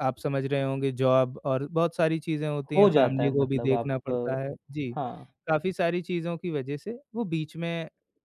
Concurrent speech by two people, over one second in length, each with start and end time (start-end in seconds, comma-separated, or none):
2.8-4.4